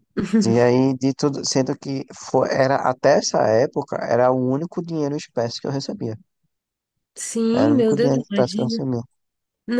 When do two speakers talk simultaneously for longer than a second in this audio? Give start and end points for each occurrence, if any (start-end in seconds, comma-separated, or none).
7.5-8.9